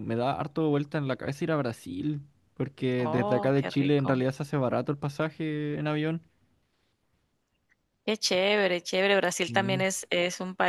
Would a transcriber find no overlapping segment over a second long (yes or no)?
no